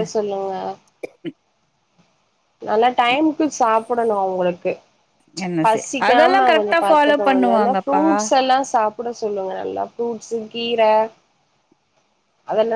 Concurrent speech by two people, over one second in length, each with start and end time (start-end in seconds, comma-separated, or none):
5.6-8.0